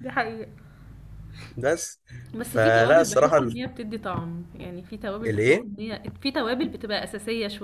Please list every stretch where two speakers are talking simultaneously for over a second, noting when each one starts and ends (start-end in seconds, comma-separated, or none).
2.4-3.6